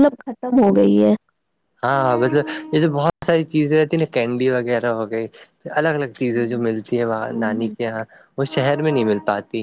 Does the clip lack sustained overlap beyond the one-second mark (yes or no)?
yes